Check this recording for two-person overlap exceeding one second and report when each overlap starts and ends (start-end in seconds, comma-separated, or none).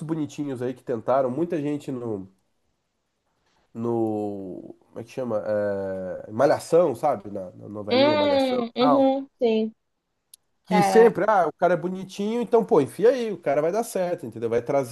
7.9-9.1